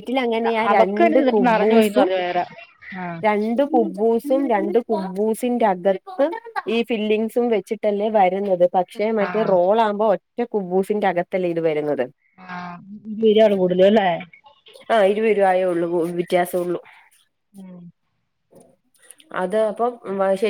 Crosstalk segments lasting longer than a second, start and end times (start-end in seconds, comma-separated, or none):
0.7-2.1